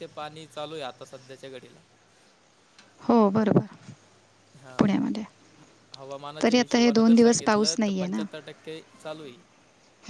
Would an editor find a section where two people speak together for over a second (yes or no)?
yes